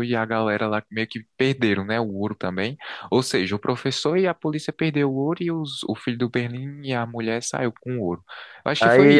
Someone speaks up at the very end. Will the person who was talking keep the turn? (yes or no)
no